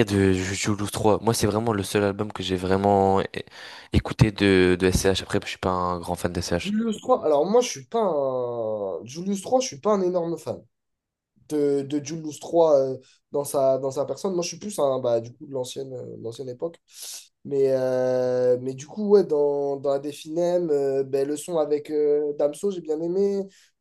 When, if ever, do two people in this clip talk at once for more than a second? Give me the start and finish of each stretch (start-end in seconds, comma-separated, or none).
none